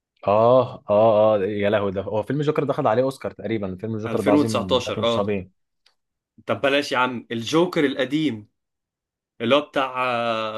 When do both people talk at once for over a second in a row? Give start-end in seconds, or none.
4.1-5.3